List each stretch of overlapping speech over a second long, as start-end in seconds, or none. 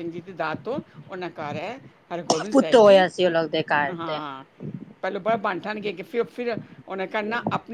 none